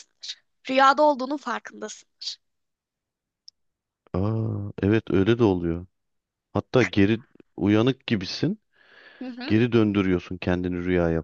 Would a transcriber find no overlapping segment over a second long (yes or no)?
yes